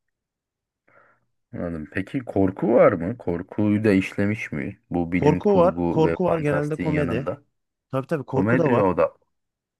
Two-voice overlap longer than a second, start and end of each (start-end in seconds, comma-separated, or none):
5.1-7.3